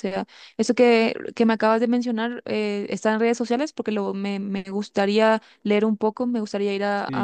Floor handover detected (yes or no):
yes